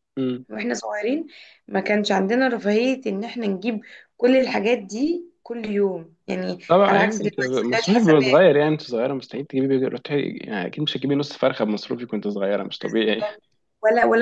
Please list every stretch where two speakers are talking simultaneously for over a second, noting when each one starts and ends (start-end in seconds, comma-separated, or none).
6.7-8.4